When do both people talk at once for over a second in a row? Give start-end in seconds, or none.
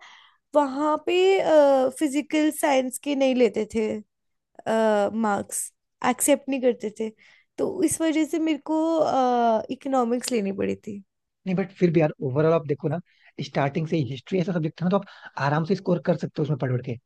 none